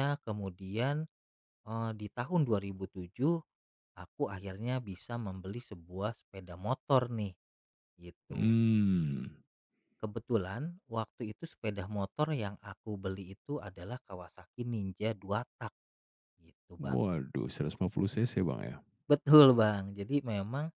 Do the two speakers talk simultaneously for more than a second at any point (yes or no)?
no